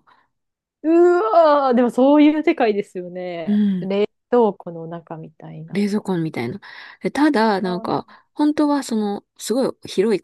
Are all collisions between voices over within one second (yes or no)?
yes